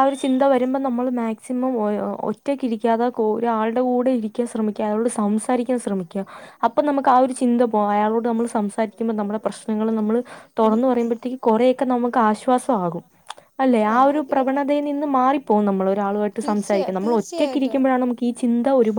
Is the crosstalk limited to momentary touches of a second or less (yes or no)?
no